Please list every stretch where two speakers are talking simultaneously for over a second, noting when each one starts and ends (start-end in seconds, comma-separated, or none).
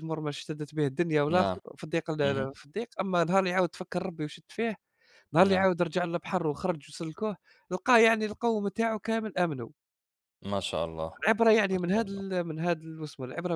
none